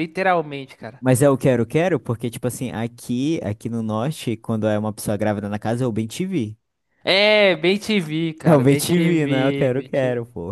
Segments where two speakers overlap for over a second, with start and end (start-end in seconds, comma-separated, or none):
8.4-9.9